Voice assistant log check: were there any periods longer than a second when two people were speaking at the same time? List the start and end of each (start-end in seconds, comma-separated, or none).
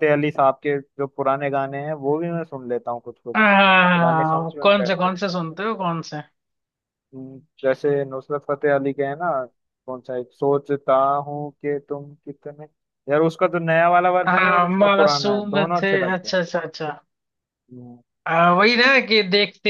3.4-5.2, 14.3-16.4